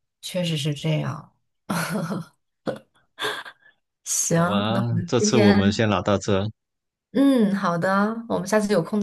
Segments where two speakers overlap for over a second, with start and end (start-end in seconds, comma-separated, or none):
4.3-5.8